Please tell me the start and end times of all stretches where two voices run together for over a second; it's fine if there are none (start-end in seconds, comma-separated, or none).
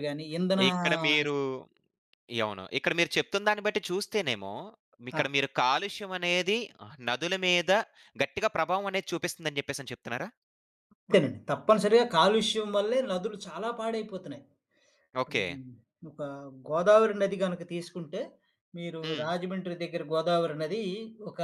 none